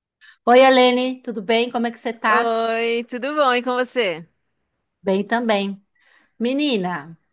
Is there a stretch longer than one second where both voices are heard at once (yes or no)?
no